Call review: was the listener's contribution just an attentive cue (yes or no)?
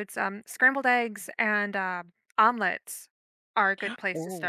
no